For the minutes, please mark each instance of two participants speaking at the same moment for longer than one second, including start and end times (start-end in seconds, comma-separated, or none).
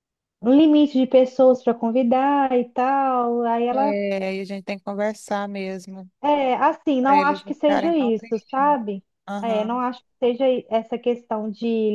7.0-8.7